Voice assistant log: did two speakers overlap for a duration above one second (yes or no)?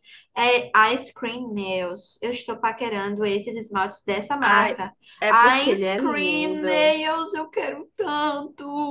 yes